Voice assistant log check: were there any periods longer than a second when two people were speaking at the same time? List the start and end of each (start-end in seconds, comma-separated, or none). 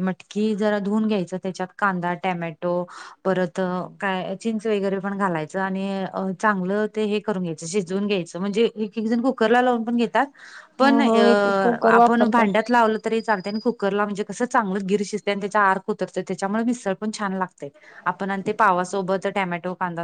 none